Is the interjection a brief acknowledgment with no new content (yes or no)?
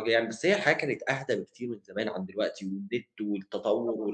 yes